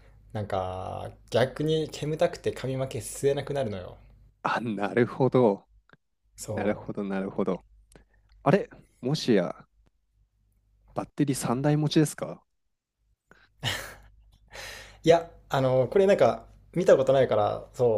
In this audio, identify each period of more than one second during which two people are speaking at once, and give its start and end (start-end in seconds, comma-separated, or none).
none